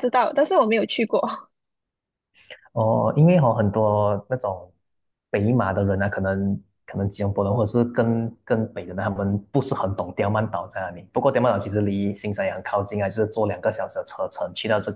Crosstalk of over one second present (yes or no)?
no